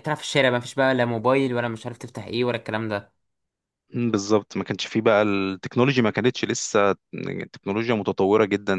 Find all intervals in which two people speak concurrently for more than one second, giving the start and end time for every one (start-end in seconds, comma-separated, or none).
none